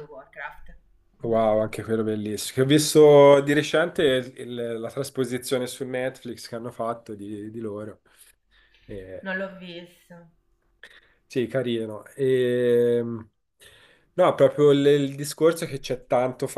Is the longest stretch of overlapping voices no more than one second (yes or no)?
yes